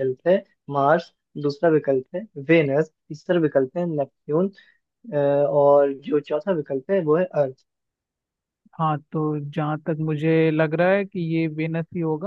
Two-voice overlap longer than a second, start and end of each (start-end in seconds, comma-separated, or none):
none